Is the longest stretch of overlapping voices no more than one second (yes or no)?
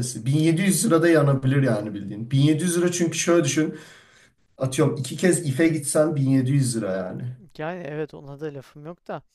yes